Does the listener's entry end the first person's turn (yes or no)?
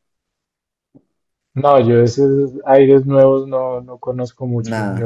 no